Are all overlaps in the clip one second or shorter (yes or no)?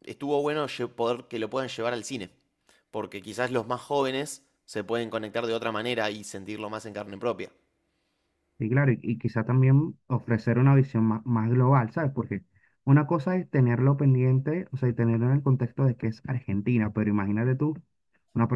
yes